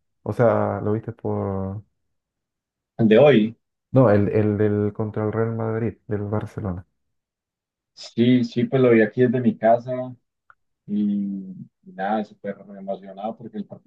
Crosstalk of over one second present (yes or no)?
no